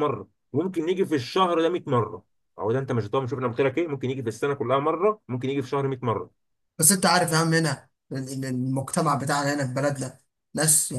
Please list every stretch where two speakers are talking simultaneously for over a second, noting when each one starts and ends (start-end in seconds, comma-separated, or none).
none